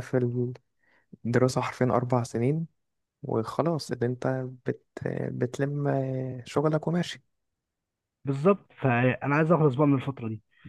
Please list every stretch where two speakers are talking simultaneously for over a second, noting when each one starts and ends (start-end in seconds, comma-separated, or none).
none